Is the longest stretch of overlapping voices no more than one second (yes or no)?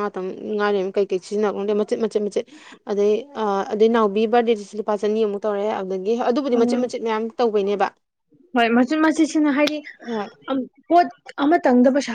yes